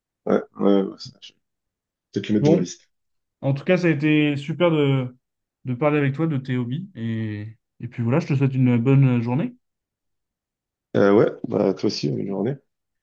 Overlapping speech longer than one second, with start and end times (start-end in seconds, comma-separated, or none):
none